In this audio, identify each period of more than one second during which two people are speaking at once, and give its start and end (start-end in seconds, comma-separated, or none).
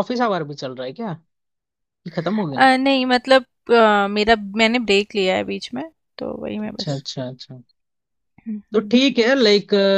none